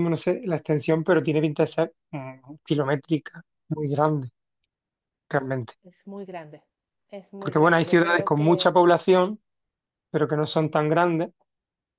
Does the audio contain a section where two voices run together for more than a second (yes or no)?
yes